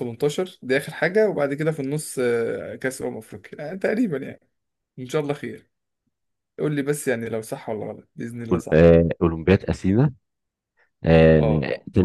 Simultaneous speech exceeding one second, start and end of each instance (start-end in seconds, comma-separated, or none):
none